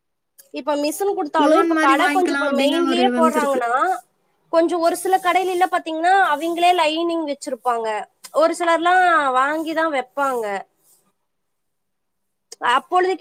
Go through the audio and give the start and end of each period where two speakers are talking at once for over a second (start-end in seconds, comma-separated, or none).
1.4-3.6